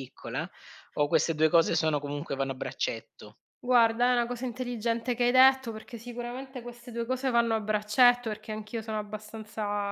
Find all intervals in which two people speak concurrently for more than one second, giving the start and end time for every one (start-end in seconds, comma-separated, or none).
none